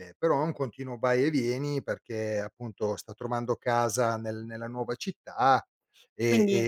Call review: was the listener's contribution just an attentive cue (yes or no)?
yes